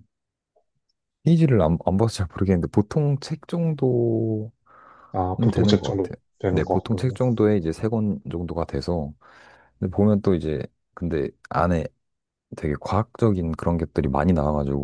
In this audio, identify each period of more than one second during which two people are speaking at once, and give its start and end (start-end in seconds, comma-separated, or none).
5.5-7.2